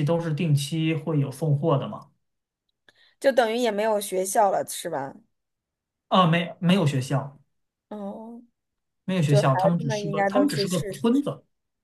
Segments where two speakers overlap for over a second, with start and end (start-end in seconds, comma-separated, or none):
9.2-11.2